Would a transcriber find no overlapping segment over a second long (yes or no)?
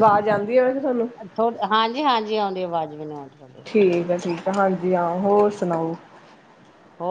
yes